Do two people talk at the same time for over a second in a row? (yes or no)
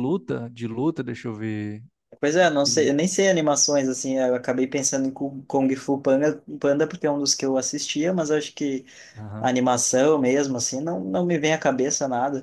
no